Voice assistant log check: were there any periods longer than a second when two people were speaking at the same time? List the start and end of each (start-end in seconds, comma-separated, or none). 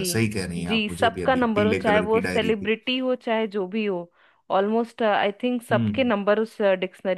0.7-2.7